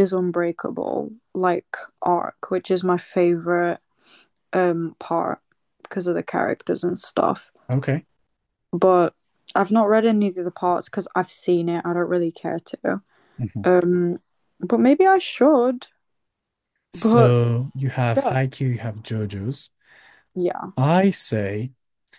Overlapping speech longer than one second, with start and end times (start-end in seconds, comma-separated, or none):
none